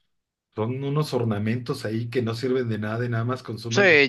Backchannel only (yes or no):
no